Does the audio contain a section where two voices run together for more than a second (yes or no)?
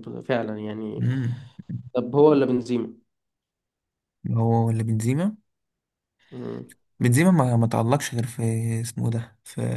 no